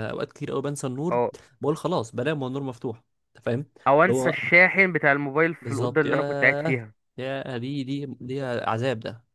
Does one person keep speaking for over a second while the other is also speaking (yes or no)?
yes